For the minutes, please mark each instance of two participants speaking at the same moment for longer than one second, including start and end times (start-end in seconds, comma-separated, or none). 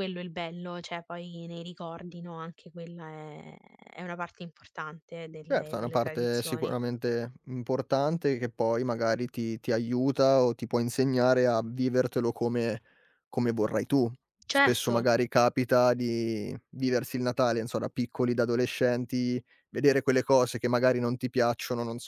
5.5-6.7